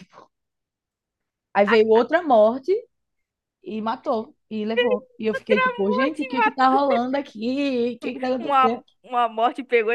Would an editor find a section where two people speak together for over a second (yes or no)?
no